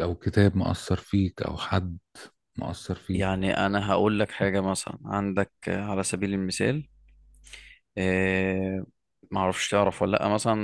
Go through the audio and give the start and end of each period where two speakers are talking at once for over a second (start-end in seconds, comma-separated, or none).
none